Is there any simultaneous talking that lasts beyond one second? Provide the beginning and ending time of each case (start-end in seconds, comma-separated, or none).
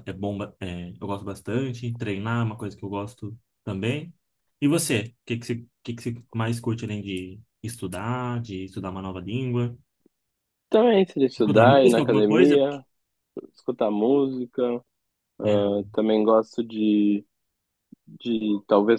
11.4-12.6